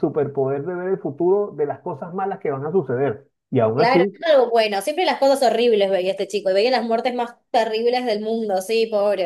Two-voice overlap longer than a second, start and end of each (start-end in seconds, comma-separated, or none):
none